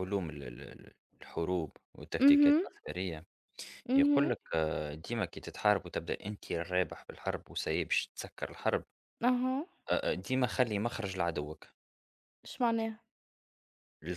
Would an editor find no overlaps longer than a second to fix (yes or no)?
yes